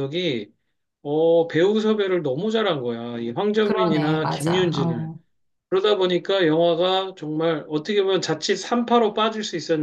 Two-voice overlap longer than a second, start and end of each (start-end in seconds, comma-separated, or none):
3.6-5.1